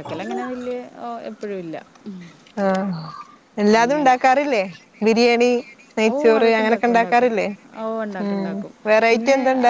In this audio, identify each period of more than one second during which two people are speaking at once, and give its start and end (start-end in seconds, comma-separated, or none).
none